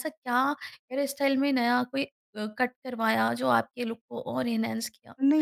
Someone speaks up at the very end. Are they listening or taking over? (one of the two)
taking over